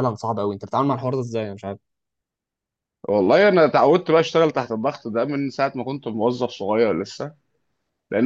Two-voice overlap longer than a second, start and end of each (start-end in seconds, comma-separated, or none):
none